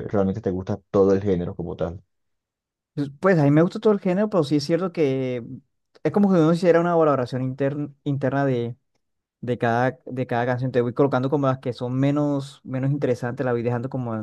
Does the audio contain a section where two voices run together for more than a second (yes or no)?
no